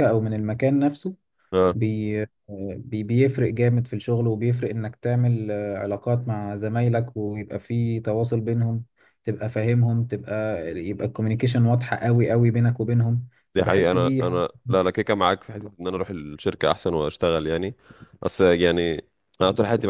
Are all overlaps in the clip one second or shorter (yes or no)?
no